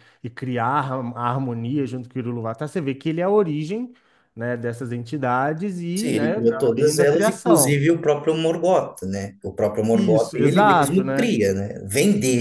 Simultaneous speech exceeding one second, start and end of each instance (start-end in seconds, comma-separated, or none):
5.9-7.8, 9.9-11.3